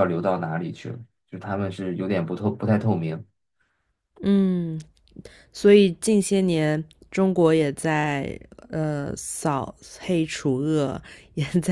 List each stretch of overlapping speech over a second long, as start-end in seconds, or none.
none